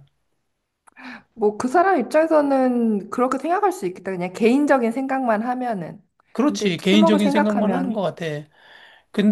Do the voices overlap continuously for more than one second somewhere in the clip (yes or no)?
yes